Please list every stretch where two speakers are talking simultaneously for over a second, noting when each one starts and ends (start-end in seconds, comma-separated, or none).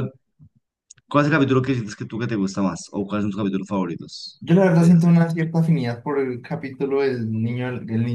none